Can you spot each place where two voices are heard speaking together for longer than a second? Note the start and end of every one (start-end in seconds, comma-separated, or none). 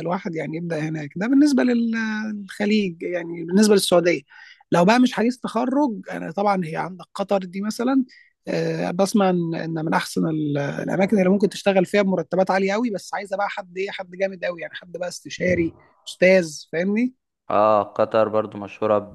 none